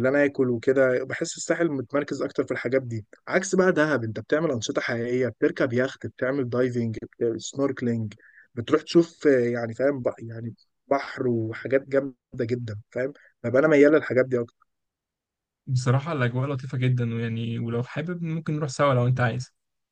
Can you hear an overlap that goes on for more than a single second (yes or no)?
no